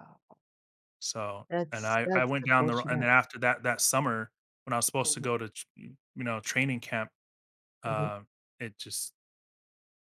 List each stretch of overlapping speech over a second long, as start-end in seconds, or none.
1.5-3.1